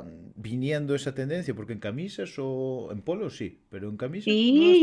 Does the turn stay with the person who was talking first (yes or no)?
no